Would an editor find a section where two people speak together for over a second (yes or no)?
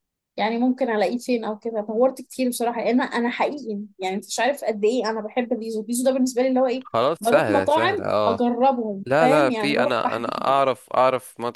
yes